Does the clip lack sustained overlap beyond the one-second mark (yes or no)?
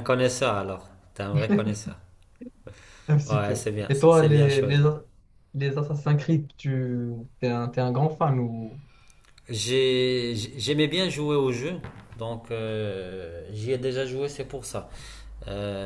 no